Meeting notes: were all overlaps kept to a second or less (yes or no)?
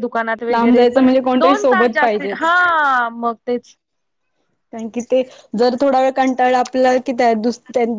no